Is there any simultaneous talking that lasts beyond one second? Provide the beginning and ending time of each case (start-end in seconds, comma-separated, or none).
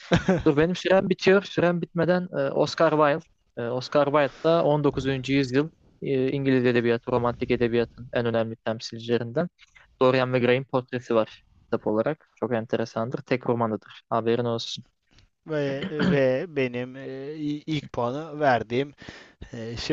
none